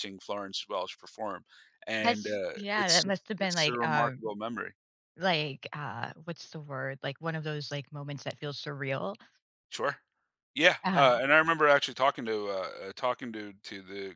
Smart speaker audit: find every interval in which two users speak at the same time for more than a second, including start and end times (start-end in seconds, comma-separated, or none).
2.0-4.2